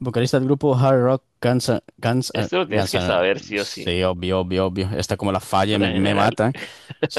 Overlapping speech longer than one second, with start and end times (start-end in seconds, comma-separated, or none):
2.3-3.9